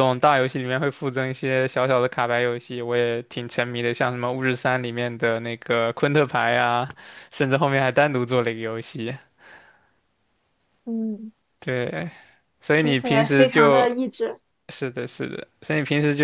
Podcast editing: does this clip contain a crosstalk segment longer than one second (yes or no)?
yes